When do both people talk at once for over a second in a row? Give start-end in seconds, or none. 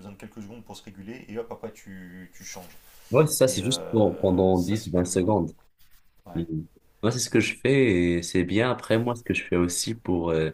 3.5-5.3